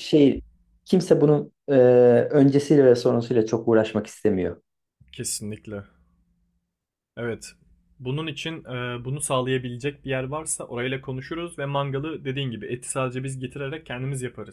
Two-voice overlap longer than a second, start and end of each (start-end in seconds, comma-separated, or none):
none